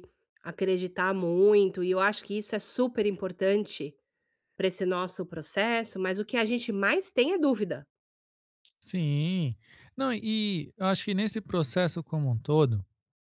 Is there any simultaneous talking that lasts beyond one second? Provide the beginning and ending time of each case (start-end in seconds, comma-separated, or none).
none